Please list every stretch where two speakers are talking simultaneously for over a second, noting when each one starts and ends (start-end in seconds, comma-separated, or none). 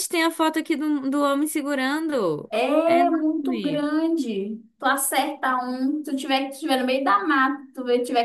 2.5-3.8